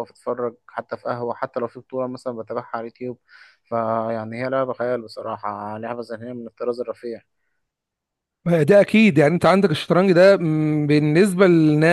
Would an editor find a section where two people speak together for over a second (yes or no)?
no